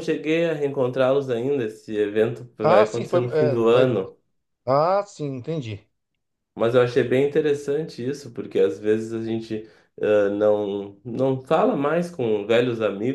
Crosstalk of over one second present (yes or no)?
yes